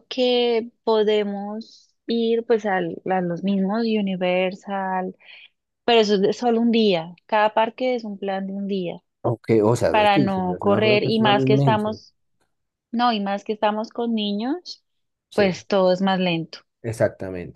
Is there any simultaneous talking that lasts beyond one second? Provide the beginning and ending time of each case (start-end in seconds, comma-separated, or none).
9.9-12.0